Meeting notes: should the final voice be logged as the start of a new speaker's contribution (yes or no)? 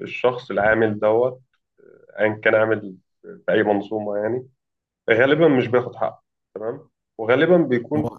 no